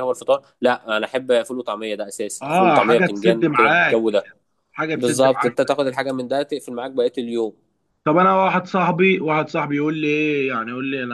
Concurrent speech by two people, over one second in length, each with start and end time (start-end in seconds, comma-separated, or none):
2.4-4.2